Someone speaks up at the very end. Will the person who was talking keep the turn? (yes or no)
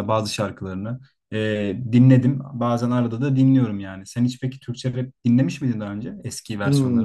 no